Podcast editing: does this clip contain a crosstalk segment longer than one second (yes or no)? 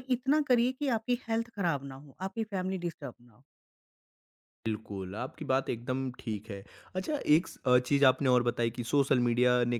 no